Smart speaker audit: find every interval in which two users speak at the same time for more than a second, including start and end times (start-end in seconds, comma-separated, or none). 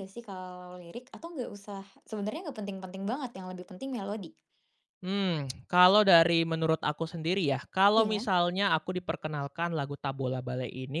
none